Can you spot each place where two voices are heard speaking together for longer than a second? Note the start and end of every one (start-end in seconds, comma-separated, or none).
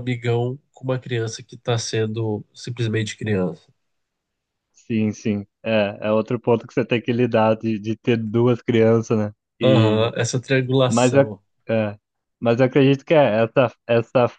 none